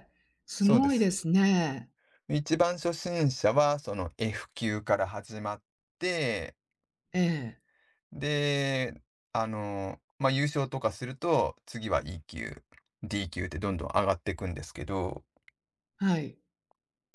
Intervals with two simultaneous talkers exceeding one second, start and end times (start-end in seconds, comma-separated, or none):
none